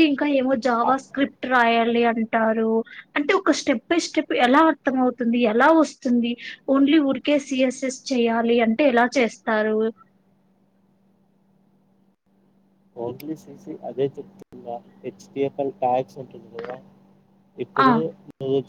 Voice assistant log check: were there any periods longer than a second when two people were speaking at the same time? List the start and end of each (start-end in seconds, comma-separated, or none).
none